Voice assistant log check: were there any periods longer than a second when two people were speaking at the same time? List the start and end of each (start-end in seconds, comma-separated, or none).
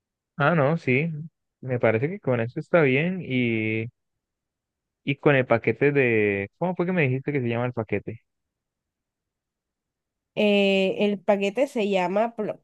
none